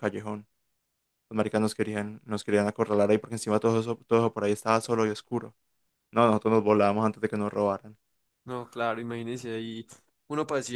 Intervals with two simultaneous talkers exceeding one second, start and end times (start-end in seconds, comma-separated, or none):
none